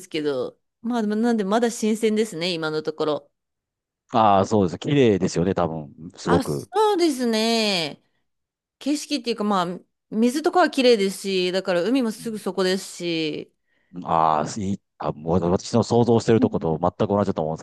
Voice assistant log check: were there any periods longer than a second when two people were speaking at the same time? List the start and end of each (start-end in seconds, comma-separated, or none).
none